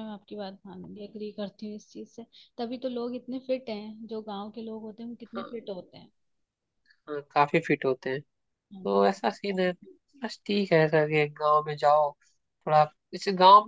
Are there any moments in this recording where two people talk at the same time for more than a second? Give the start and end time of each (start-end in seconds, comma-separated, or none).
none